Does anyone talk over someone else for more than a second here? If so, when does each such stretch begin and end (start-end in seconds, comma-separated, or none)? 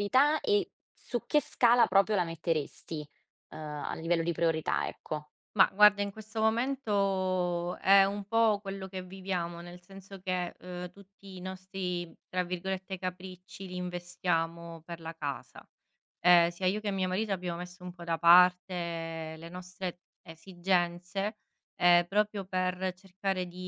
none